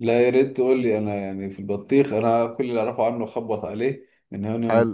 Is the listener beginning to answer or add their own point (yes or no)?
no